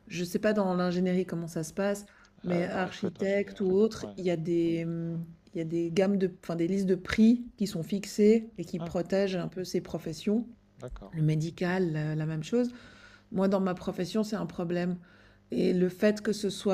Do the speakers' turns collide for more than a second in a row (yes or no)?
yes